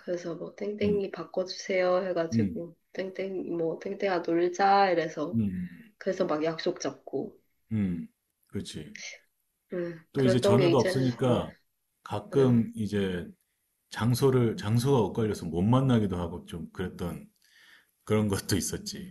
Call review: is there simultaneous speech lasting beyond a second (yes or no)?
yes